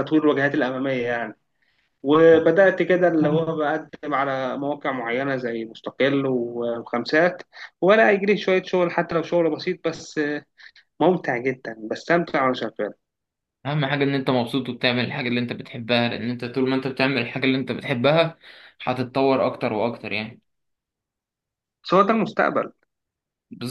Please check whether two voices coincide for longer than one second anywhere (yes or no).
no